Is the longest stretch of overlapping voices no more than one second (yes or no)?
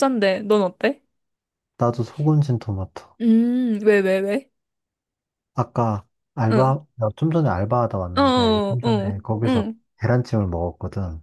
no